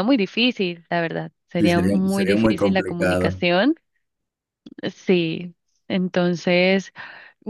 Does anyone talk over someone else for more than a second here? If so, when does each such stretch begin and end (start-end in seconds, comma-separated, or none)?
1.6-3.4